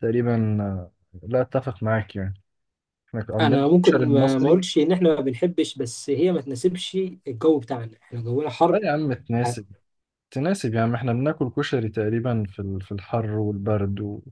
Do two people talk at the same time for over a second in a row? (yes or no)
yes